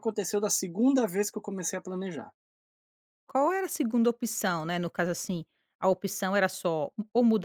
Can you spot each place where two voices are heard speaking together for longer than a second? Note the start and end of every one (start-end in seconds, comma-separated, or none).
none